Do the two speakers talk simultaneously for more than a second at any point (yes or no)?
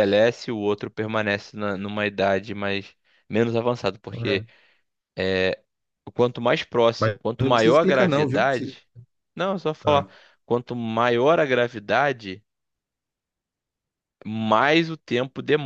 yes